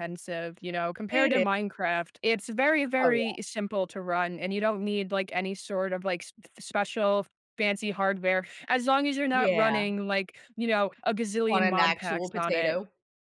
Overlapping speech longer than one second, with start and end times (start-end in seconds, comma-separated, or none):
11.5-12.8